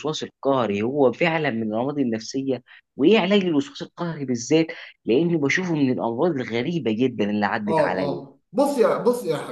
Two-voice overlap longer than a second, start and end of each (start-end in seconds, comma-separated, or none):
none